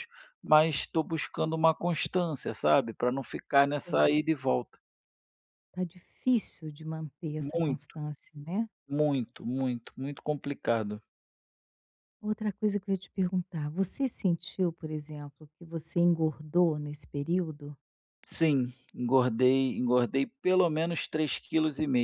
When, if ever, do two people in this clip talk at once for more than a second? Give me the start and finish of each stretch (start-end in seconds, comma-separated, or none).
none